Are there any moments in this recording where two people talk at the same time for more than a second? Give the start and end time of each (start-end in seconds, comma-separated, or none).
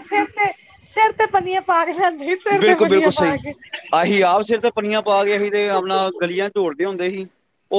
none